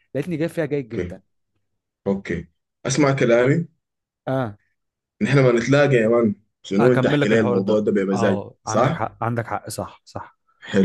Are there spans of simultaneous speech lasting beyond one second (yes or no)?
yes